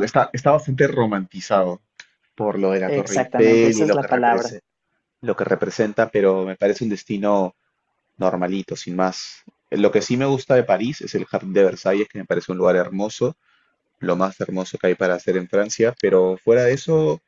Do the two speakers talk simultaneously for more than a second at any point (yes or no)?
yes